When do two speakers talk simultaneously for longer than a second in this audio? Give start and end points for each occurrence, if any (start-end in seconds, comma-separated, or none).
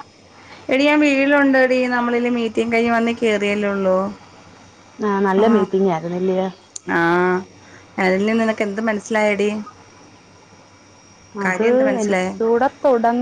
none